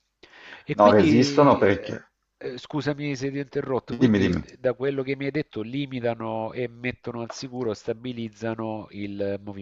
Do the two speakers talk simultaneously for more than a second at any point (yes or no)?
yes